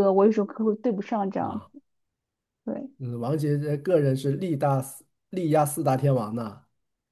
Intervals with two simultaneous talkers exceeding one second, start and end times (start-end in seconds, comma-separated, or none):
none